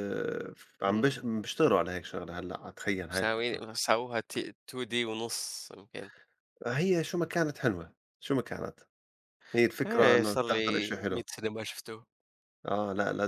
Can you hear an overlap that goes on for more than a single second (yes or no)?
yes